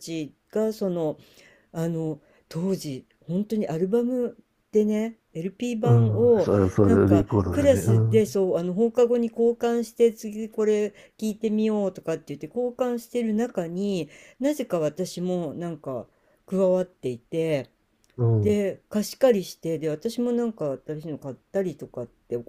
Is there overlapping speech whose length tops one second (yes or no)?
yes